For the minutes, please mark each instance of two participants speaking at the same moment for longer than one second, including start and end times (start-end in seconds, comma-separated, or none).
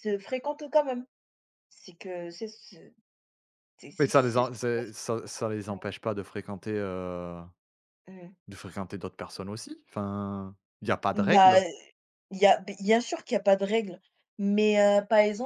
none